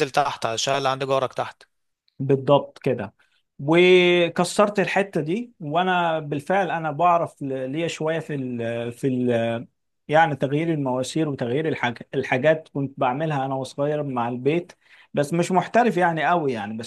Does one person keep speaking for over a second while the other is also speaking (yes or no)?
no